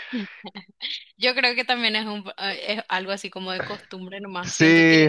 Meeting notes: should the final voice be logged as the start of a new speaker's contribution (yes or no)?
no